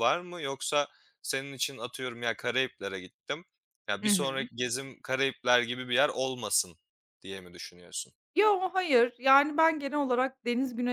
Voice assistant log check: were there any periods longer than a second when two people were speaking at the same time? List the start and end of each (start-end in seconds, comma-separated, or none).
none